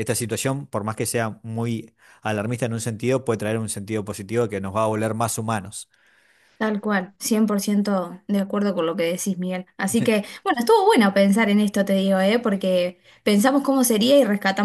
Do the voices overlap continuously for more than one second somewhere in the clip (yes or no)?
no